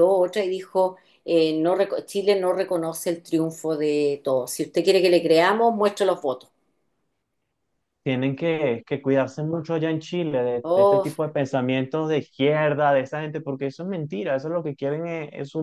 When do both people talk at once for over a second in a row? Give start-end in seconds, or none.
none